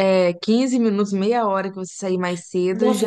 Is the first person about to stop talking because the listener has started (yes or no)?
yes